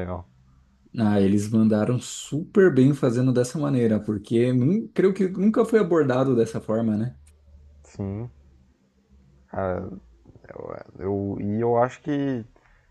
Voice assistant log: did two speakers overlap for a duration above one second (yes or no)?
no